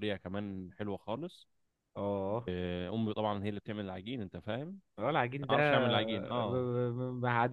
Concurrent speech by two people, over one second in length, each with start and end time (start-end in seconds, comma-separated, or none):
none